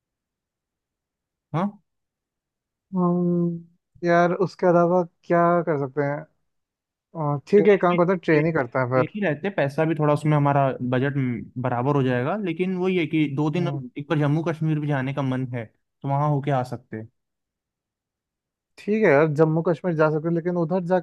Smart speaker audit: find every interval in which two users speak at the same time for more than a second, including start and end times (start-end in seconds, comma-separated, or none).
7.6-9.2